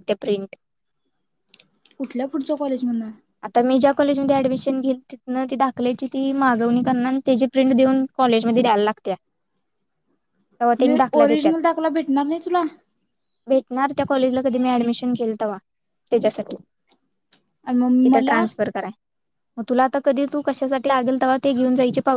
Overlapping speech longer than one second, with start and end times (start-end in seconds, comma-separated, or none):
none